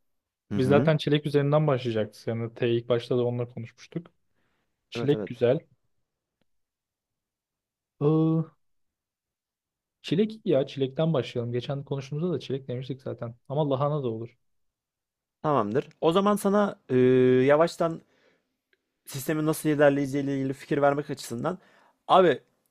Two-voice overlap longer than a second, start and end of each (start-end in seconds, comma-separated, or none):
none